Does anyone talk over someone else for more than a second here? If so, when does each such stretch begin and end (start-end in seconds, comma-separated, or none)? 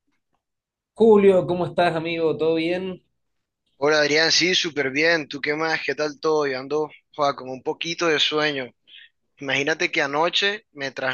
none